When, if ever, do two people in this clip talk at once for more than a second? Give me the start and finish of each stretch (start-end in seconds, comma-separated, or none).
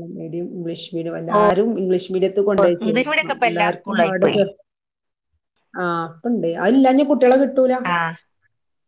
2.9-4.3